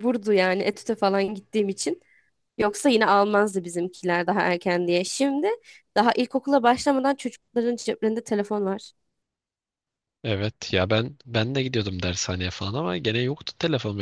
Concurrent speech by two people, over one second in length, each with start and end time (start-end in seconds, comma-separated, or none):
none